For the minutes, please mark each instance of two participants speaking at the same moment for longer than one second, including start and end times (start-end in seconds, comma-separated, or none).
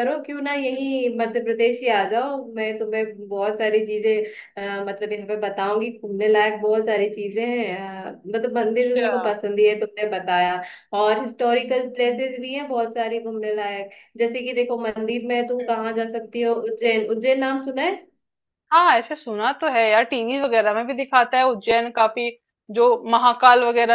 none